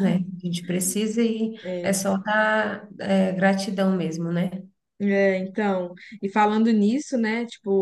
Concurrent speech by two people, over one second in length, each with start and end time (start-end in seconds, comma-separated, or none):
none